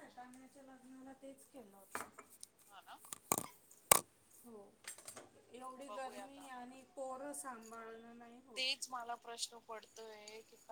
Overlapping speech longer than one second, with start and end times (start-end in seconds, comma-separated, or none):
none